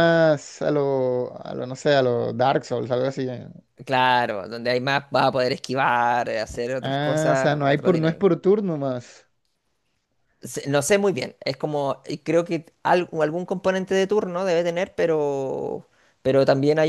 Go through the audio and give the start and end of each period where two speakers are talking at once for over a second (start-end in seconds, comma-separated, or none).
6.8-8.2